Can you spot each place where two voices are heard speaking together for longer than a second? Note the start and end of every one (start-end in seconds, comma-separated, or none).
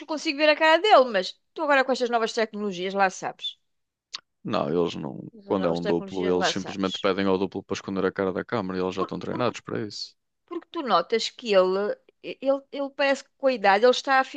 5.3-7.1